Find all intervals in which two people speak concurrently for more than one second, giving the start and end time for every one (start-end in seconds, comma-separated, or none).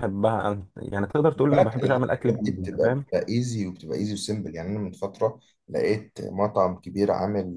1.3-3.0